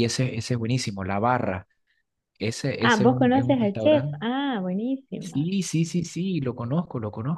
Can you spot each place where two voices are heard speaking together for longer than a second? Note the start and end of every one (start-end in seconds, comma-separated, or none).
2.8-4.3